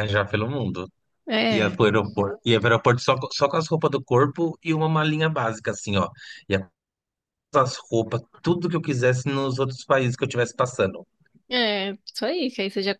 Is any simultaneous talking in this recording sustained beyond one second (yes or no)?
no